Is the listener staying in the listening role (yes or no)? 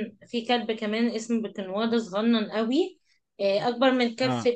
yes